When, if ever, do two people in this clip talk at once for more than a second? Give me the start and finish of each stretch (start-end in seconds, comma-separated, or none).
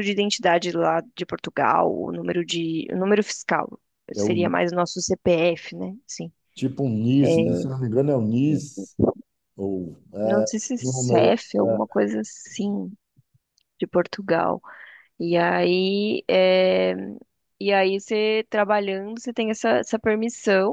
10.2-11.8